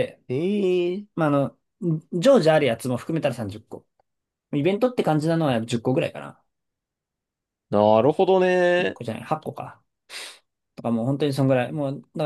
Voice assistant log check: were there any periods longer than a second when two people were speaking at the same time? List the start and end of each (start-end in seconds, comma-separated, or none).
none